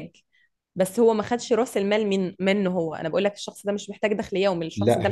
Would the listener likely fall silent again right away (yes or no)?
no